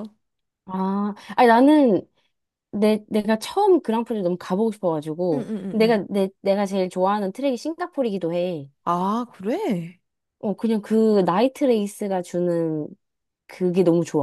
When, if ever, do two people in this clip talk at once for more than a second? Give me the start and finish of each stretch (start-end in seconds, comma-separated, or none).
none